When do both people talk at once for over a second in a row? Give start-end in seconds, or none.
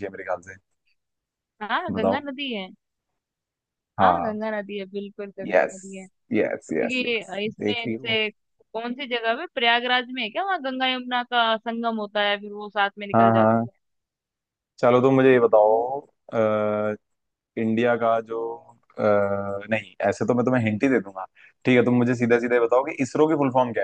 6.7-8.2